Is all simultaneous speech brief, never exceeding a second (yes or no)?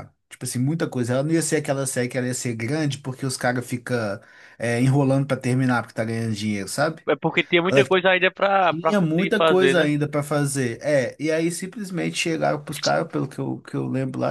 no